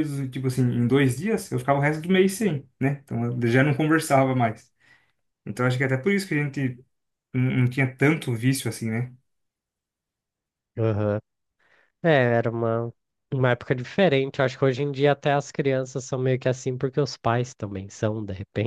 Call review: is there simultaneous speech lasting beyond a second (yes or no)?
no